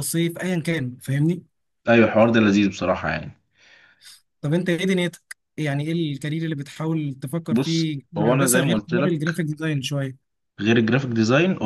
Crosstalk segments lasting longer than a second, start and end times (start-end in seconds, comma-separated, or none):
7.5-9.2